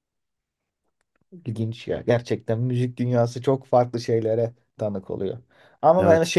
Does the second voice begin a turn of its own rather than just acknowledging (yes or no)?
no